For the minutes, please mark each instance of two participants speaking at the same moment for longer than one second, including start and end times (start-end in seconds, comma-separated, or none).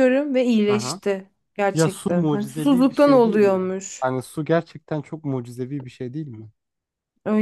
1.7-4.1